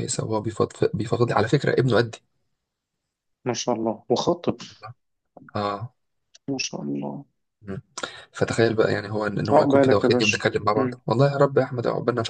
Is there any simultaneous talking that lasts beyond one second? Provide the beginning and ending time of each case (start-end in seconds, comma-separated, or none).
9.5-11.0